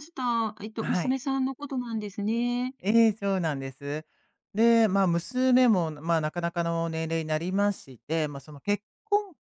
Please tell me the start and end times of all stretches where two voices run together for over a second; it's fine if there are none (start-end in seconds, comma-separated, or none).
none